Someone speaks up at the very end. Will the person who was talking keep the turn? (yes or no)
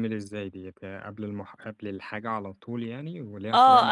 no